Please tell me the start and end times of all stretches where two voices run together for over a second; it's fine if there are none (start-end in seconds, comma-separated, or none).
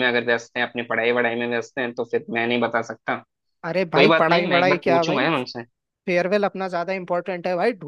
3.9-5.3